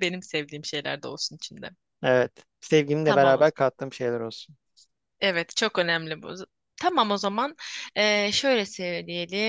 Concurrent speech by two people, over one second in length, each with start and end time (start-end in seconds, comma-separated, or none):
none